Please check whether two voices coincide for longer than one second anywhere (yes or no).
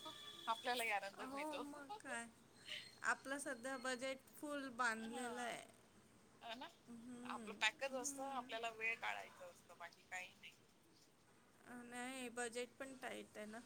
no